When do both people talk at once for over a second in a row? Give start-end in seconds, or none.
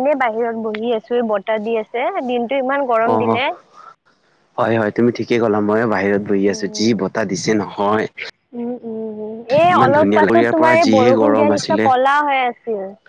9.7-11.8